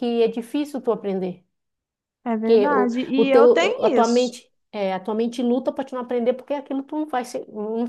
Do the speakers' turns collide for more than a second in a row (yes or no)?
yes